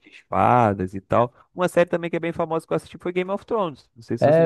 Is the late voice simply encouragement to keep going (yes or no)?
no